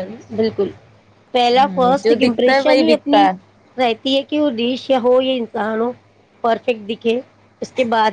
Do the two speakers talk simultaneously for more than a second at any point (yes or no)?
yes